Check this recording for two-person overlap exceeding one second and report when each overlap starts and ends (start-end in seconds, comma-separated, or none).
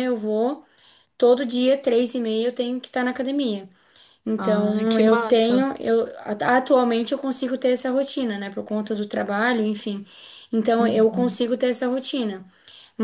4.4-5.6